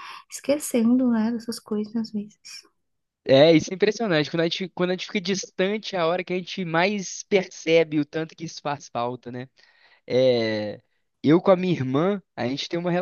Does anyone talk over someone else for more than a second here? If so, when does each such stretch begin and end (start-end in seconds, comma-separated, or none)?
none